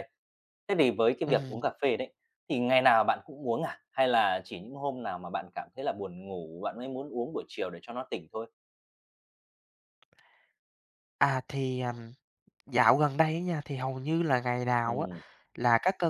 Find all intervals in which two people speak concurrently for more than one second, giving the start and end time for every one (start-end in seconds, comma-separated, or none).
none